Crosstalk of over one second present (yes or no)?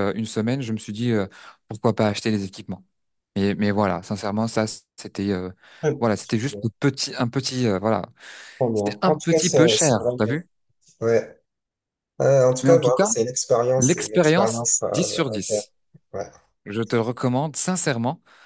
yes